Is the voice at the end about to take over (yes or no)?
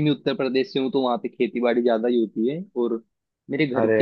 no